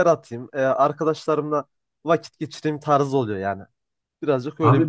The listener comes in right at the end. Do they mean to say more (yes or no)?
yes